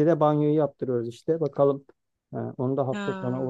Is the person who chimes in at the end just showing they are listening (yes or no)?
yes